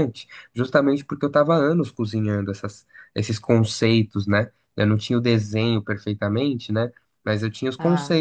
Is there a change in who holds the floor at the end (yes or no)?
no